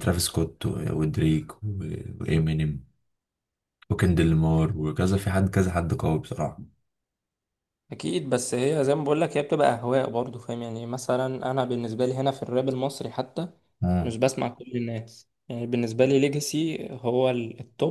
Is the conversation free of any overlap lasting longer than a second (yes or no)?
yes